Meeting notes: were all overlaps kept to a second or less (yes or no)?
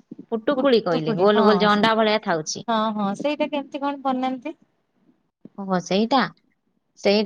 no